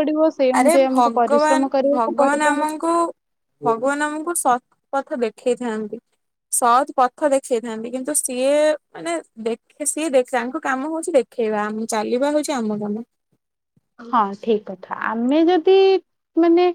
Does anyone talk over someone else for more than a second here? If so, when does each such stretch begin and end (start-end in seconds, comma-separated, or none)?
0.6-2.6